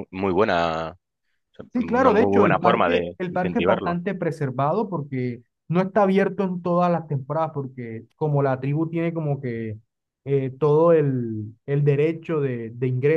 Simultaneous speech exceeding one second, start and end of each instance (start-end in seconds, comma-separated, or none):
1.8-4.0